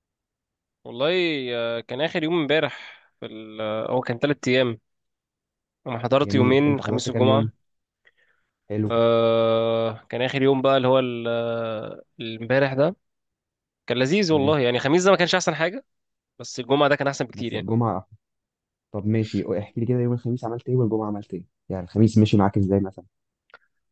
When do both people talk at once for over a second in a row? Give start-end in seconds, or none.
6.2-7.5